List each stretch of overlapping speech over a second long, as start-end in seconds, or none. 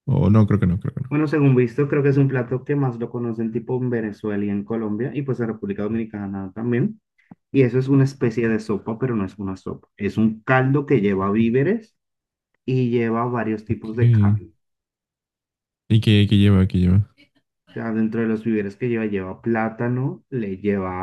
none